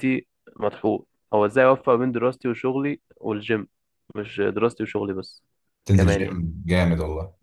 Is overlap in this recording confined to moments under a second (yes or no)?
yes